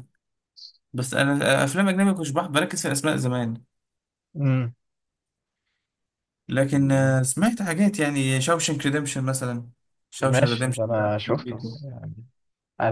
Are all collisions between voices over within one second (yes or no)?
no